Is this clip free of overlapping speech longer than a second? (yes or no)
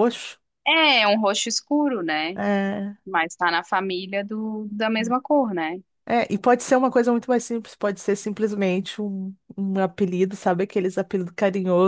yes